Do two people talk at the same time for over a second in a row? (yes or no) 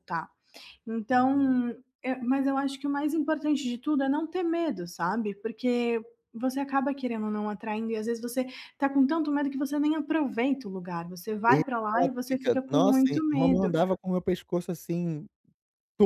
yes